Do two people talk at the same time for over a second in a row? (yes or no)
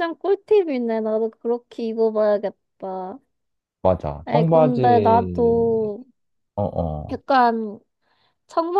yes